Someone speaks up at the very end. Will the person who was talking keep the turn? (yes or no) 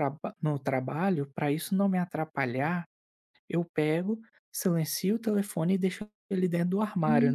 no